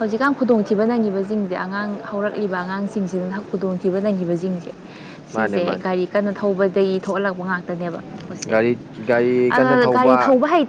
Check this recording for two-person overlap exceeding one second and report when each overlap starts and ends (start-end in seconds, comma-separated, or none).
none